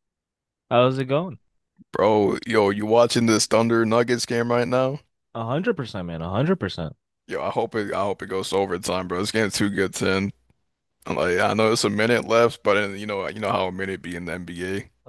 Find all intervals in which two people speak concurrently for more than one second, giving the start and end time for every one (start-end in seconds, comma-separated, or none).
none